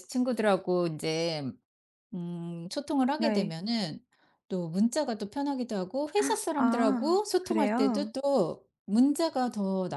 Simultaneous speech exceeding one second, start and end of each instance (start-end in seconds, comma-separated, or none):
6.5-8.1